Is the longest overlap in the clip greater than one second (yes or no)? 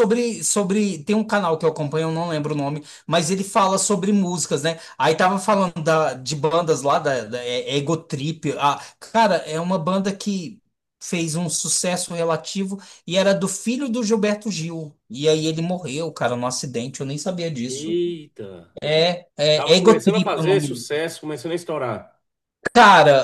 yes